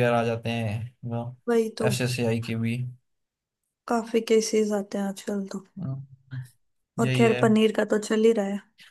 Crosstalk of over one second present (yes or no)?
no